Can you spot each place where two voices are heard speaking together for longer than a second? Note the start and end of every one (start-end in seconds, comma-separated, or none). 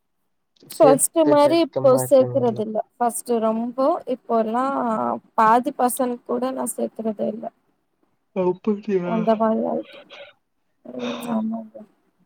0.8-2.6